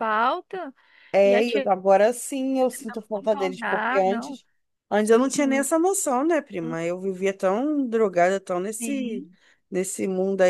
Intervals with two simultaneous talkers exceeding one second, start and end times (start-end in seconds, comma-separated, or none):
2.7-4.4